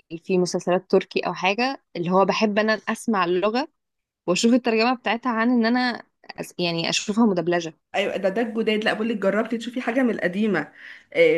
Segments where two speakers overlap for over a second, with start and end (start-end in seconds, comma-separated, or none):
none